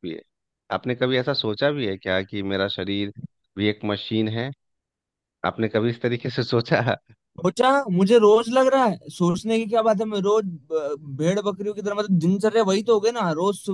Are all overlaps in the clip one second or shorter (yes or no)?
yes